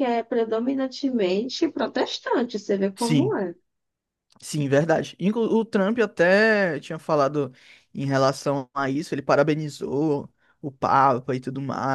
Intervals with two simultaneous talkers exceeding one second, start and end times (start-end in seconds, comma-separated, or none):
none